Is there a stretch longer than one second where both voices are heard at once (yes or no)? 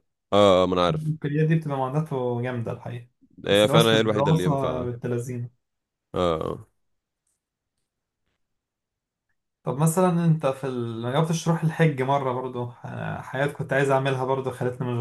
yes